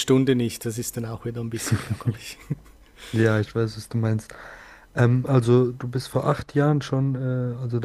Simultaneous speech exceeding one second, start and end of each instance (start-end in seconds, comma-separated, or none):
none